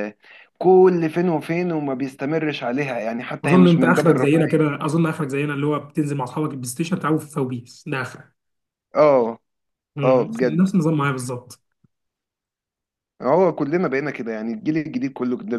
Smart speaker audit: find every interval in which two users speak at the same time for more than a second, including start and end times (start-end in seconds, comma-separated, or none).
3.5-4.7